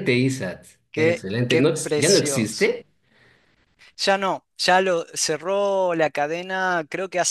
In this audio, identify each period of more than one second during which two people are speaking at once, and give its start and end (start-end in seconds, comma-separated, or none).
0.9-2.7